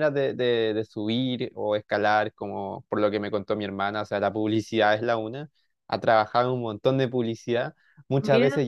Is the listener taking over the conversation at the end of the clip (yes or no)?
no